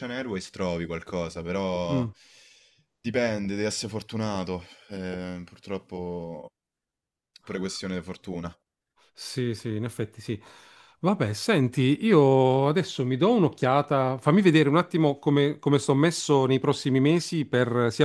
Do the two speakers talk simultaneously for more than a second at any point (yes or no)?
no